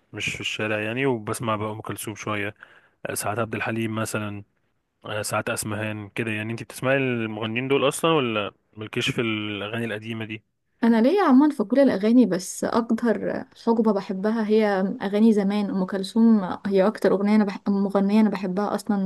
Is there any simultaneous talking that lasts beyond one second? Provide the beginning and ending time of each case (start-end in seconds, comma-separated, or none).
none